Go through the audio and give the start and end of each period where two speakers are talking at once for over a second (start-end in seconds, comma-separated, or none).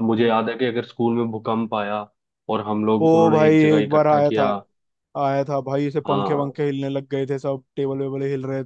3.0-4.4